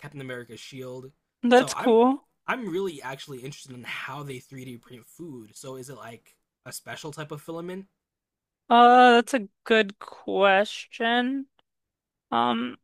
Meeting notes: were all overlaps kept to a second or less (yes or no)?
yes